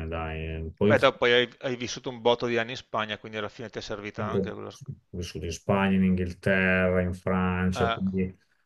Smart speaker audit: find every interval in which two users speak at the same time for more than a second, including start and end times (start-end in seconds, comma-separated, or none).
none